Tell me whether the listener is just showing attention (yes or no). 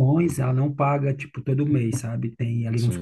yes